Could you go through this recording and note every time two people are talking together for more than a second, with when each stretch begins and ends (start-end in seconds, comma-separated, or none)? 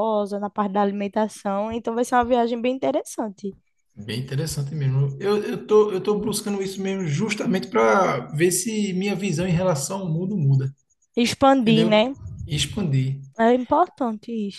none